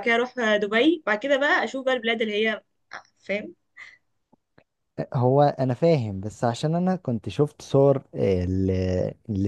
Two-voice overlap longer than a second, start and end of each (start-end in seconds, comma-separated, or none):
none